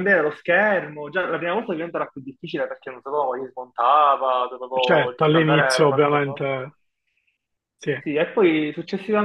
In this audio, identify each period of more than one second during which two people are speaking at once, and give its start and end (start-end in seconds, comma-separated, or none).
4.8-6.5